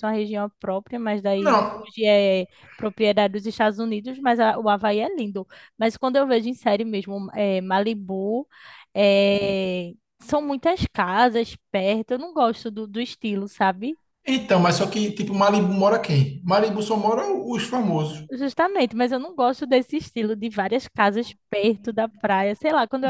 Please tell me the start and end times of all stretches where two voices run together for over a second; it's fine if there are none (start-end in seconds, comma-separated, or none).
none